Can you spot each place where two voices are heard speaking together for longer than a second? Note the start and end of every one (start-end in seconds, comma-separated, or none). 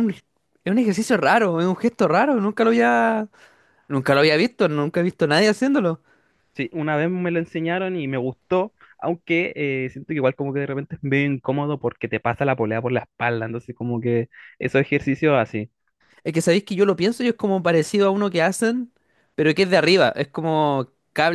none